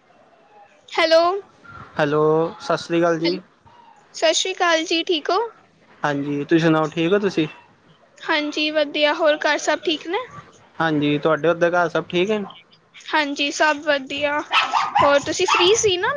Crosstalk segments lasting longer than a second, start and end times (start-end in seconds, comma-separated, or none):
none